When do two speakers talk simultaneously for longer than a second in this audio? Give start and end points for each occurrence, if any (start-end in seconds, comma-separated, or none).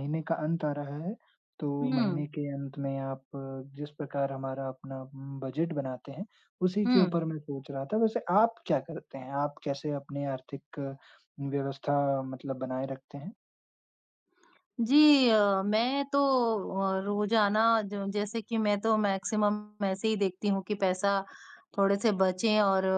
none